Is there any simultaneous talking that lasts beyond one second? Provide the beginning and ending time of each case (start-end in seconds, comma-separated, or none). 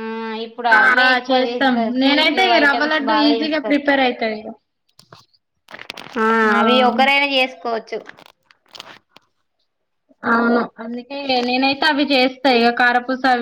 0.8-3.8